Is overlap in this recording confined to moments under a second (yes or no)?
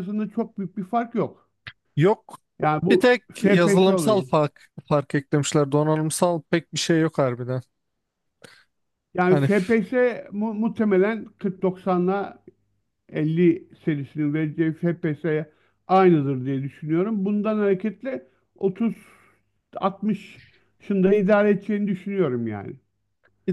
no